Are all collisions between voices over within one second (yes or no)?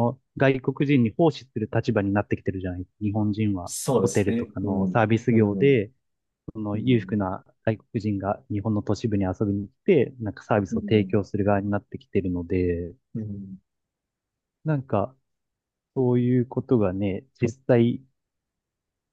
no